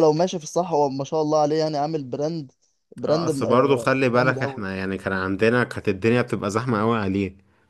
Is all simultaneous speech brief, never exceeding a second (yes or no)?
no